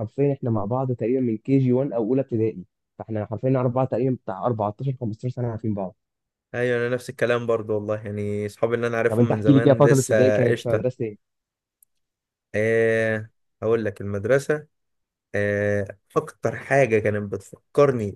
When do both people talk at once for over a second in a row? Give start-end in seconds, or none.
9.1-10.8